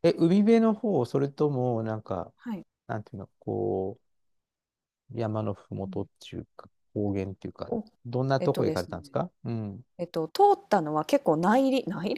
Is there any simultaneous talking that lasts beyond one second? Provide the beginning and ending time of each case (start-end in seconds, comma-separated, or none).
none